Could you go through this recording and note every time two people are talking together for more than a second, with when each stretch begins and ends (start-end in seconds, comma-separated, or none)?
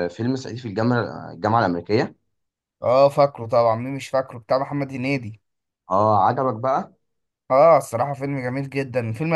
none